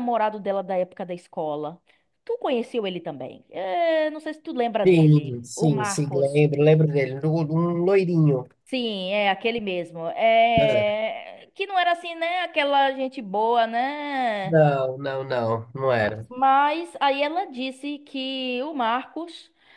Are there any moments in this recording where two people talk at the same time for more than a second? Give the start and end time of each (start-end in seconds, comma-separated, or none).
4.9-6.5